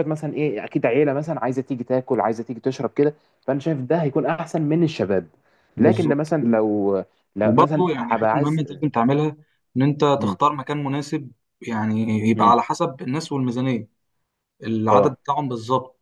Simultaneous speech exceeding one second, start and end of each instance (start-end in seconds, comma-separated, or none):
7.4-8.8